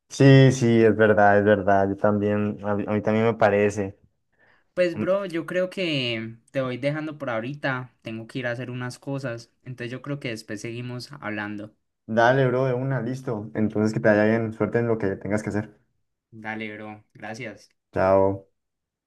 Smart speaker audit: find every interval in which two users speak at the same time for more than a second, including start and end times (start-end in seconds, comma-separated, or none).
none